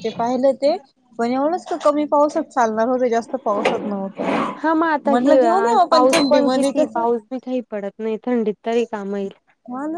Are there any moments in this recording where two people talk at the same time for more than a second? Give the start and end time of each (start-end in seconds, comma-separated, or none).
none